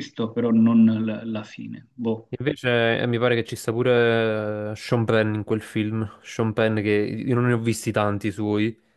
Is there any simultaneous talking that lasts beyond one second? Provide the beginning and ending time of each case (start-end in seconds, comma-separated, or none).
none